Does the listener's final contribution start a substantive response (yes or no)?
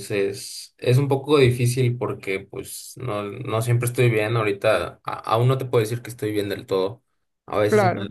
no